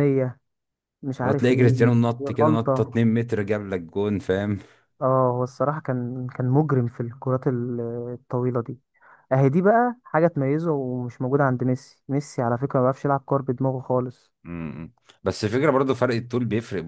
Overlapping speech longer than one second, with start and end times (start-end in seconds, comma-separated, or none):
1.2-3.0